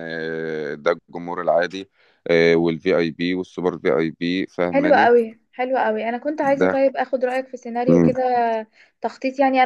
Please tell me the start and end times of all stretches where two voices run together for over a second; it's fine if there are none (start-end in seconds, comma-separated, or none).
none